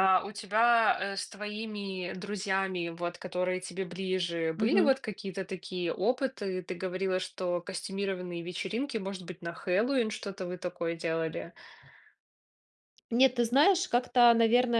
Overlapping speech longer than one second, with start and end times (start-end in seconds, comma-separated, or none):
none